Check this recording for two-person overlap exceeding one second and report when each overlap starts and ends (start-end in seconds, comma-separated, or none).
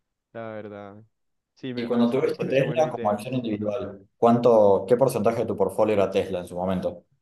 1.7-3.2